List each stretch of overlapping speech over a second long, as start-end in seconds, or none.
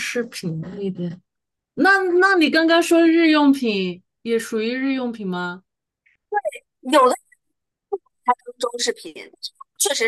none